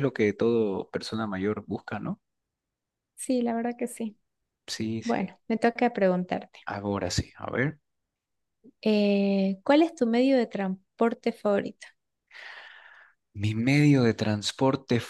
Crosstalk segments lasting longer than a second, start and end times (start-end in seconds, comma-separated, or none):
none